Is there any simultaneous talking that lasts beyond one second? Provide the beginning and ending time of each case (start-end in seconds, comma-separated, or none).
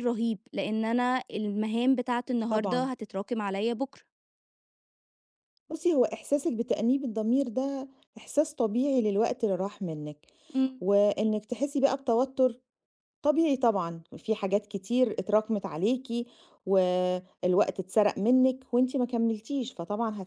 none